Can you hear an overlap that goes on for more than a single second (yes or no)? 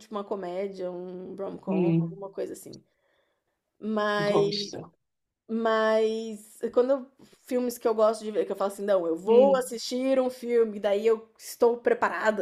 no